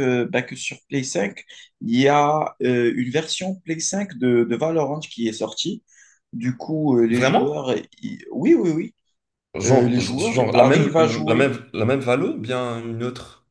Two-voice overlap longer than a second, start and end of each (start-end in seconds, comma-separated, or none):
9.7-11.5